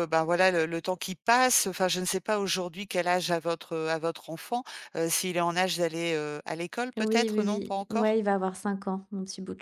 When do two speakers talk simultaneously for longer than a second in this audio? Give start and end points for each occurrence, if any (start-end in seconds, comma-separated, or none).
7.0-8.2